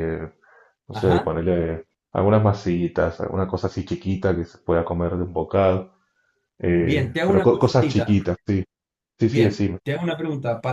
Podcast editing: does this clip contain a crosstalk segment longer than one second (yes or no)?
yes